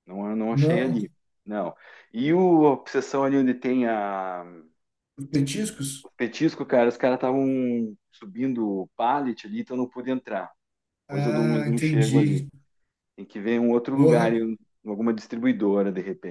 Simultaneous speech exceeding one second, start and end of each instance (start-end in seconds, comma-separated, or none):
11.1-12.4